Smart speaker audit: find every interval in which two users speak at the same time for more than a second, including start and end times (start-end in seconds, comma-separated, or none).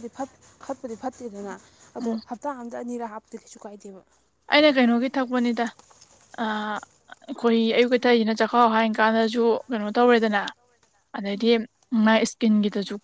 none